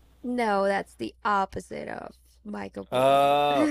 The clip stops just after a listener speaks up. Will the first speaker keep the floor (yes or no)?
no